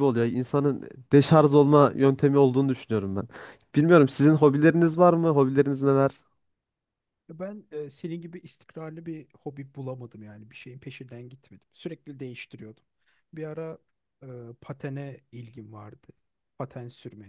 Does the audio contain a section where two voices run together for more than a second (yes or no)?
no